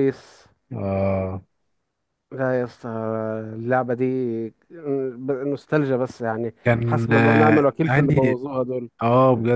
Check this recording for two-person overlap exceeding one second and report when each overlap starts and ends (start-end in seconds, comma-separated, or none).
6.6-8.3